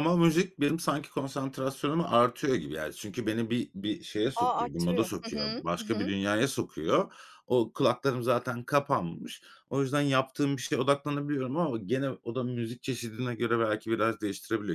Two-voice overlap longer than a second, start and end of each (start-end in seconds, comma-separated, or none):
4.3-6.1